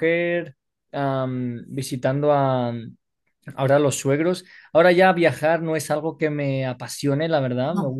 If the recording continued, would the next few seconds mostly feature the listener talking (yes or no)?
no